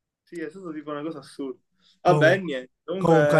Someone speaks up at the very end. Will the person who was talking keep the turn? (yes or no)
no